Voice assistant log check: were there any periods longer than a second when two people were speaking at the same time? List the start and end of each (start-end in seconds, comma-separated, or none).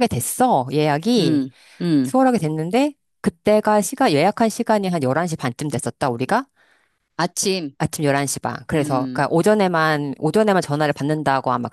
none